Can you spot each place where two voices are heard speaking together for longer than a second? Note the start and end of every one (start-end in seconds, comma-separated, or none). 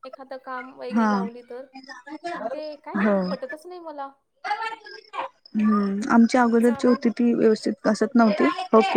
none